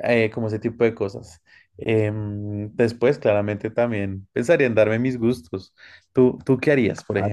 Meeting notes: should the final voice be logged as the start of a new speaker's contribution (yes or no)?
yes